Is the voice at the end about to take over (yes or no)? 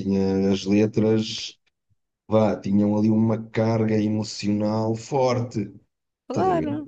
yes